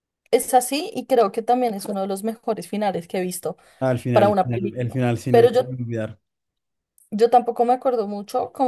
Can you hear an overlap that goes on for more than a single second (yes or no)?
yes